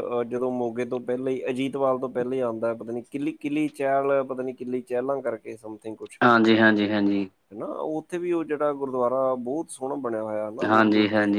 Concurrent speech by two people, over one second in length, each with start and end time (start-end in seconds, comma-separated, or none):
none